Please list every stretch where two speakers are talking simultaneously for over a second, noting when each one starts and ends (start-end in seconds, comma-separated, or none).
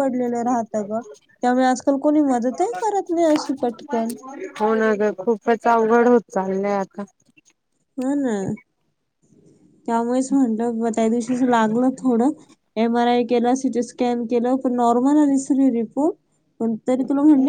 none